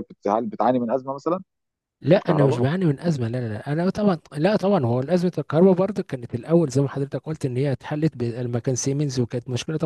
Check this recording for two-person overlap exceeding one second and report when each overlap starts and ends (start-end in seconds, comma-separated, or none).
none